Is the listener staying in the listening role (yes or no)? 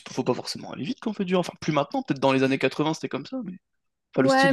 no